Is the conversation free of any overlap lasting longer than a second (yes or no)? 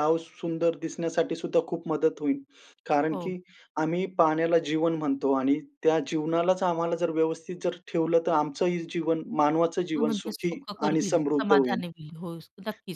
no